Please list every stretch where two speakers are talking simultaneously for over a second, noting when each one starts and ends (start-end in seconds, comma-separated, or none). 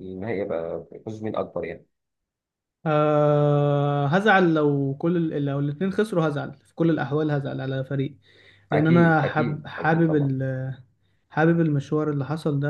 8.7-10.3